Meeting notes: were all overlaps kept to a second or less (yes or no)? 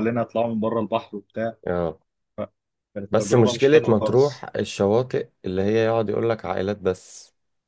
no